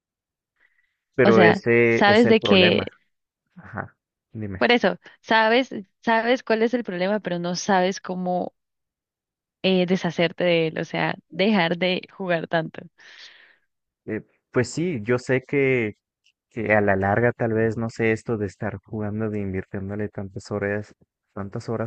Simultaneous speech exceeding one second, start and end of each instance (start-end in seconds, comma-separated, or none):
1.2-2.9